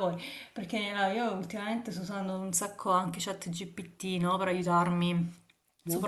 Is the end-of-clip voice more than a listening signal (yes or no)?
no